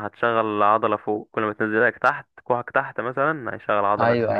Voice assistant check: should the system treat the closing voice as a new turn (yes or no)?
yes